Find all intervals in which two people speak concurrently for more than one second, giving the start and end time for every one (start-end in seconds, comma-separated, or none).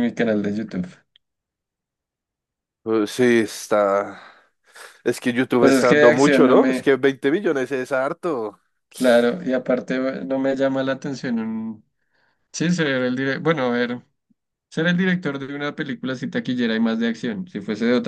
5.6-6.9